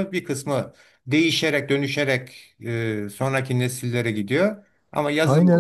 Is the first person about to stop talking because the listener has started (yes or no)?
yes